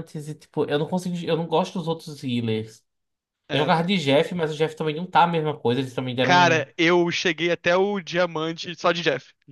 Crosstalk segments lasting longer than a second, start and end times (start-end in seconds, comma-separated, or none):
none